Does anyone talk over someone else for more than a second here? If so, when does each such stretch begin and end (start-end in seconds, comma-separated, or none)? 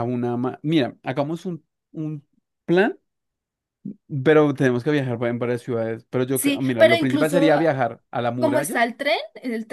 6.3-7.5